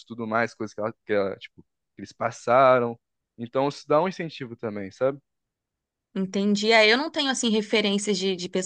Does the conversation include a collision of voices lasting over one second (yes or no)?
no